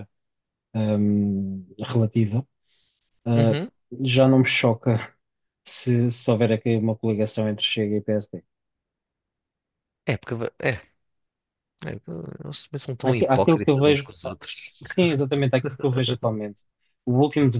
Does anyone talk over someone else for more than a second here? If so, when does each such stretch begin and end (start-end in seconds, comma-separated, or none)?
13.0-14.7